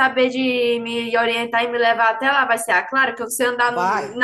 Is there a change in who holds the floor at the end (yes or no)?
no